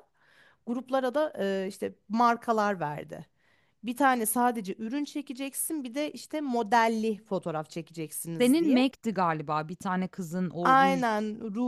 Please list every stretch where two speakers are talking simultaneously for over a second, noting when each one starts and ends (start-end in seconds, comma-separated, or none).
none